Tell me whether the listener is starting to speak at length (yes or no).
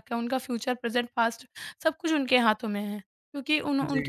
no